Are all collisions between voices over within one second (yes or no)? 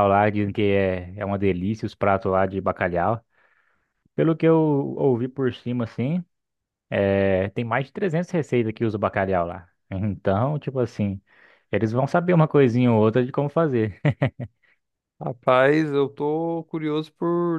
yes